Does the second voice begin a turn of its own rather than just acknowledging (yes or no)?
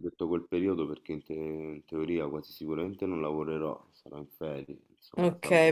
yes